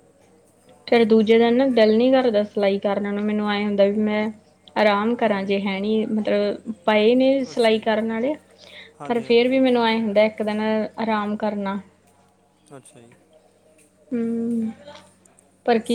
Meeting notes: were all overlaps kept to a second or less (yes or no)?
yes